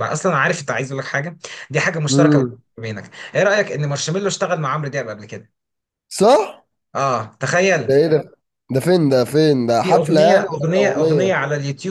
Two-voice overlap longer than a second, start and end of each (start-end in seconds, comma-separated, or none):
9.8-11.4